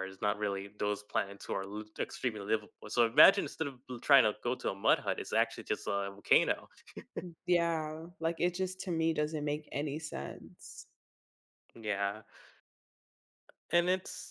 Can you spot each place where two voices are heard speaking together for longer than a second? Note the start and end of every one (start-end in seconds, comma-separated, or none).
none